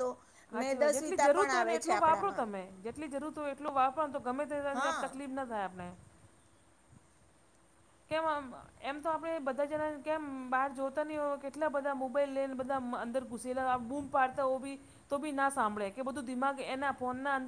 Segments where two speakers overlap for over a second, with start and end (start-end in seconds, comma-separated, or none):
0.6-2.4